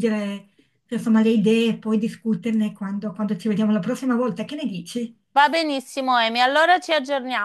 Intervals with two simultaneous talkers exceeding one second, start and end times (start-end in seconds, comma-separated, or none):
none